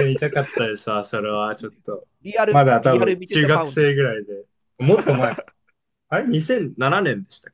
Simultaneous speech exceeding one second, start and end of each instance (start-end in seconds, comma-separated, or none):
2.5-3.9